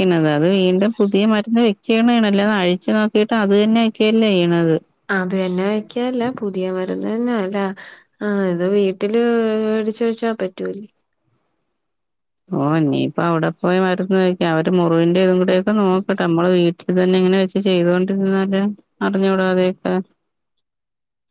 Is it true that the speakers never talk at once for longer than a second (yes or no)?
yes